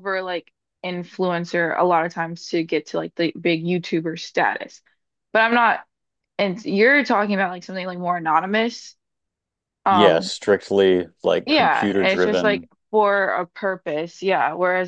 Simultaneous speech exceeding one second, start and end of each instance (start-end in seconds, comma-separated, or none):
11.4-12.7